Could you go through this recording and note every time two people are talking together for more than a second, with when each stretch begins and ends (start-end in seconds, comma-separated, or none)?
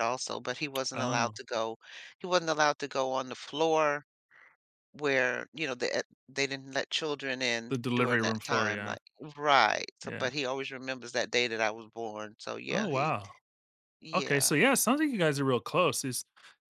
7.7-9.0